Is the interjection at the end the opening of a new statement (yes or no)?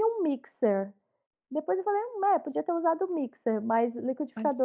no